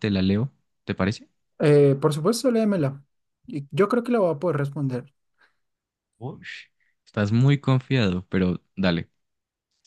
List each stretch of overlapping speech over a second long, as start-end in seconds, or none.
none